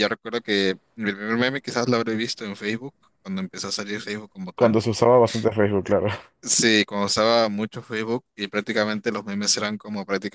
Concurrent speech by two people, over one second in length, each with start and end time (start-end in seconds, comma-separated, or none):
none